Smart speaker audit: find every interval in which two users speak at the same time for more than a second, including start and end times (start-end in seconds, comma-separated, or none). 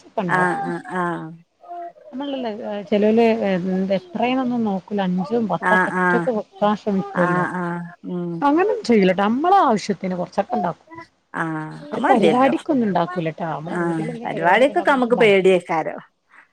13.8-15.6